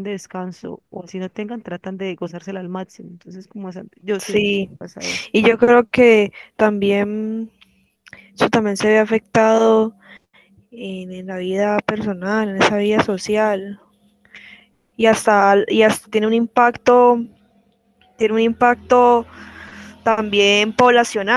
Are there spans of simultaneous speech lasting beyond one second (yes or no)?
no